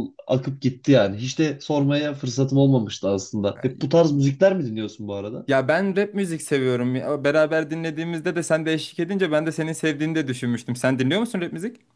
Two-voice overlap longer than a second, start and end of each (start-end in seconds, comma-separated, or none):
none